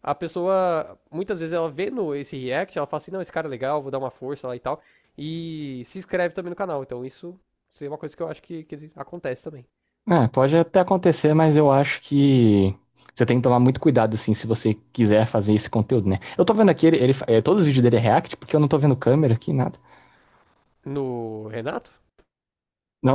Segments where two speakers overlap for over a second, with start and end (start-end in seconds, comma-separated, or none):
none